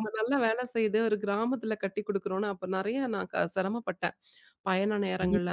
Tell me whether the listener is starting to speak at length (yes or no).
no